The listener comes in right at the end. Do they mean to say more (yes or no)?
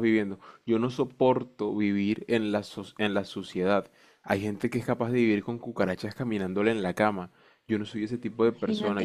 no